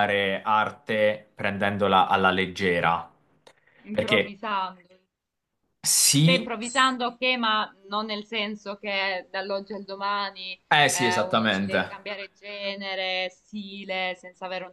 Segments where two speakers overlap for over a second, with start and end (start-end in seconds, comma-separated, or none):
10.7-12.0